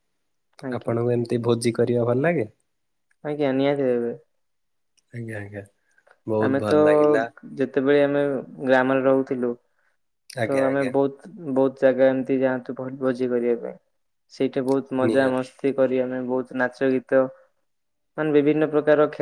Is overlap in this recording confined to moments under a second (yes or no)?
yes